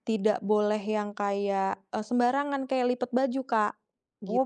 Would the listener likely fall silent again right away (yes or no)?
no